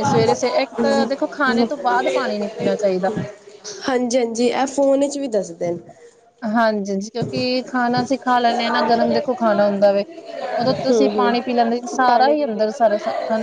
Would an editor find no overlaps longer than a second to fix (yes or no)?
no